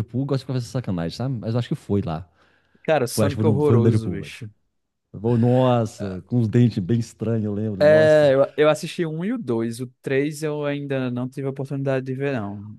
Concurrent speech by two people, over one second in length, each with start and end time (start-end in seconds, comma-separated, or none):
3.1-4.3